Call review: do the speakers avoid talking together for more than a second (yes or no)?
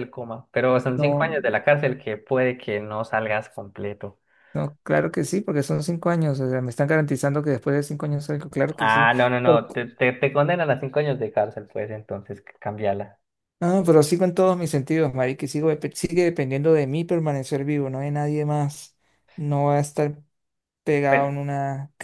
yes